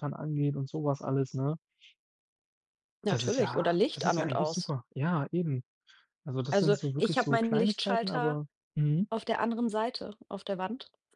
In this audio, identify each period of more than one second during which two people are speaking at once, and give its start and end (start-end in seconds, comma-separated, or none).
3.1-4.7, 6.5-8.4